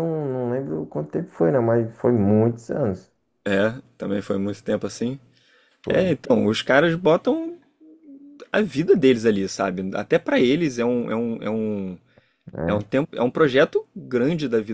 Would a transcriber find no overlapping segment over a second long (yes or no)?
yes